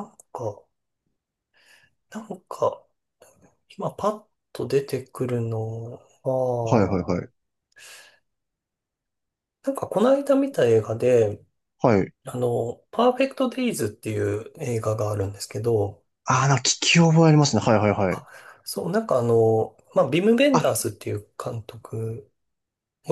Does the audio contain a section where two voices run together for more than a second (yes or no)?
no